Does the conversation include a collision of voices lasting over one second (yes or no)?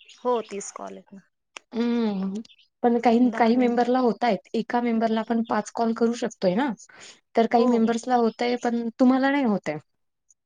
no